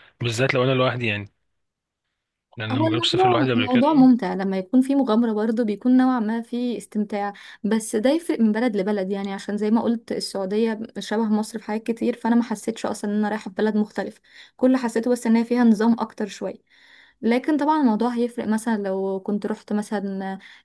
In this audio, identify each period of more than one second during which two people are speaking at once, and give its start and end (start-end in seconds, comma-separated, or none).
2.7-4.1